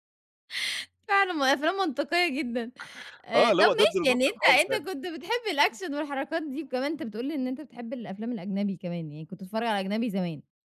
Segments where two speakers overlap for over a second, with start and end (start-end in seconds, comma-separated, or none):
3.4-4.9